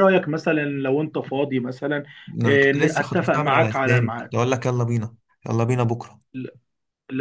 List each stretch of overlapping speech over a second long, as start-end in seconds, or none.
2.5-4.3